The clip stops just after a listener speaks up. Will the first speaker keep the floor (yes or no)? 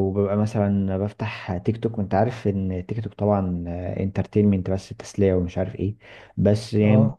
yes